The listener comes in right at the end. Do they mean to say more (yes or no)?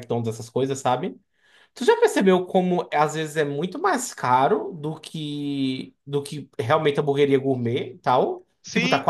yes